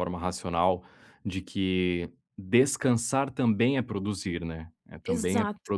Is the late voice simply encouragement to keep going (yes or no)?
yes